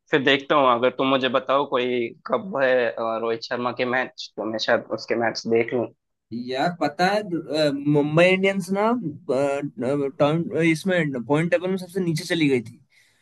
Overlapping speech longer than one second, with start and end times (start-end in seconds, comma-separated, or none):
none